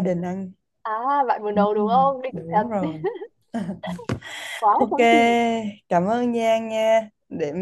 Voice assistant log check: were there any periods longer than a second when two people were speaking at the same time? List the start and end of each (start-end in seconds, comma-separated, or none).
1.5-2.9